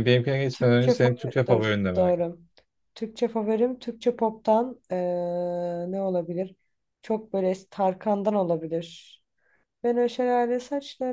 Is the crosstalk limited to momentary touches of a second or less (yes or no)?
no